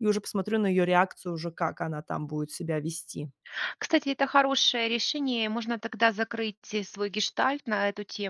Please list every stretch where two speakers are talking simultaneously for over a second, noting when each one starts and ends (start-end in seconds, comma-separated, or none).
none